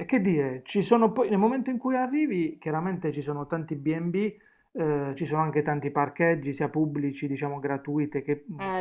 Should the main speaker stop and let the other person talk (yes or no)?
yes